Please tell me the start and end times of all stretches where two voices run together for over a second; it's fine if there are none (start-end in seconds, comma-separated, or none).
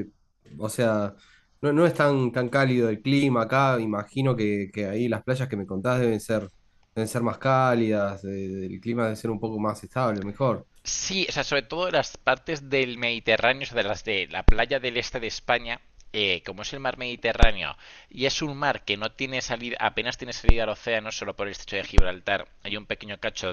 none